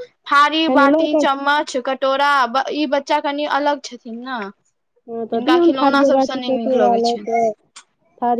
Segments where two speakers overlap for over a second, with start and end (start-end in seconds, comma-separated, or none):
5.3-7.4